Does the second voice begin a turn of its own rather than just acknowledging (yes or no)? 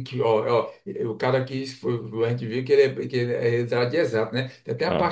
no